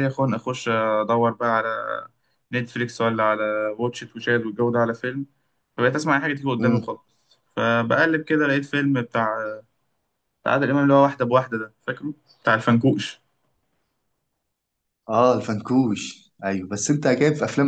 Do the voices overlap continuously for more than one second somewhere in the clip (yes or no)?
no